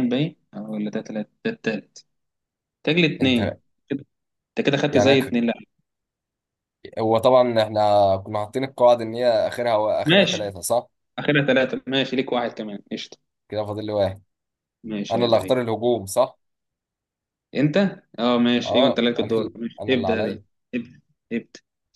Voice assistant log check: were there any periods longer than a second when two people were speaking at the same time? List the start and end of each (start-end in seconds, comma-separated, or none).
18.6-20.4